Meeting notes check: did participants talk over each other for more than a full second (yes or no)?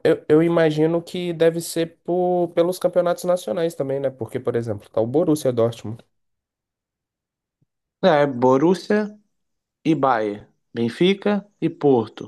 no